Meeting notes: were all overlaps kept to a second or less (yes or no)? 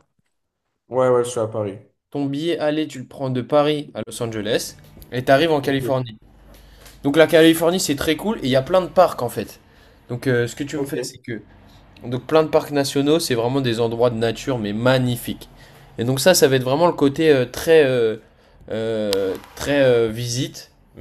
yes